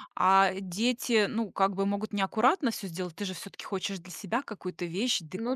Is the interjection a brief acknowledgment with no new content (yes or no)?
yes